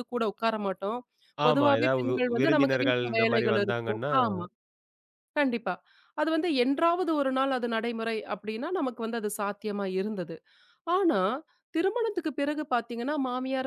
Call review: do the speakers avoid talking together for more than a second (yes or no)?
no